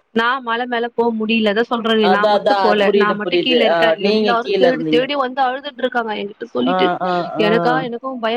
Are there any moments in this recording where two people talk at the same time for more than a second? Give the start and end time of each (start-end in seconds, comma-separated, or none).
2.1-5.0